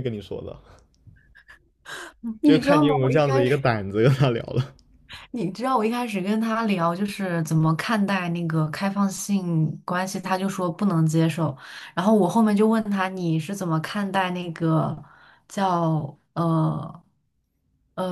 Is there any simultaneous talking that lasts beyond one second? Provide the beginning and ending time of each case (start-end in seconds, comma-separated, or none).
2.4-3.6